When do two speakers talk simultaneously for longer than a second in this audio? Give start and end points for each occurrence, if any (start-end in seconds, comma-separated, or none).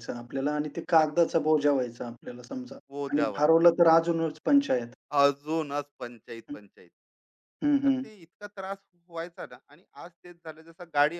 none